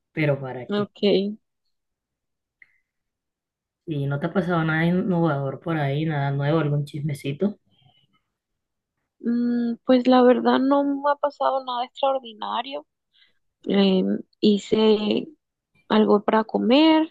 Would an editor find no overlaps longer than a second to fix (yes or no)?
yes